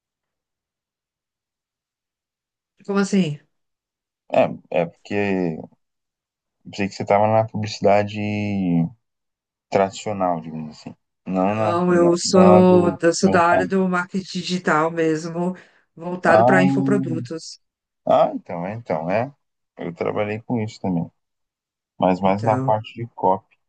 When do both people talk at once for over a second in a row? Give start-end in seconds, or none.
11.4-13.7